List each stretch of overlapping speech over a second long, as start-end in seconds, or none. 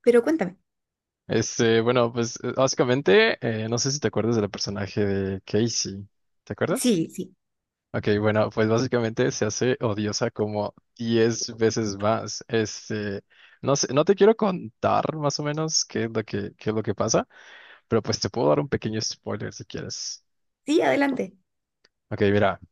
none